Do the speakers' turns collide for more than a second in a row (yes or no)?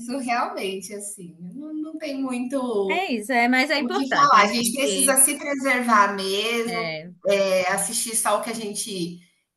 yes